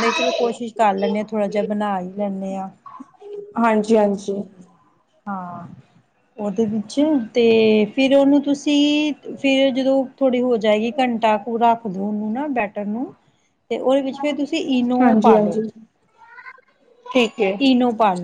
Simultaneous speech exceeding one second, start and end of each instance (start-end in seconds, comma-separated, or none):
none